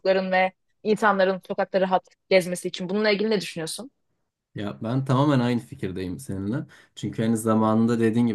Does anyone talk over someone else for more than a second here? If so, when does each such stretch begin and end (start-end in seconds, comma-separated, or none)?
none